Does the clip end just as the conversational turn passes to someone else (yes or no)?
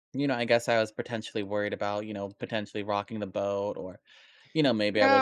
yes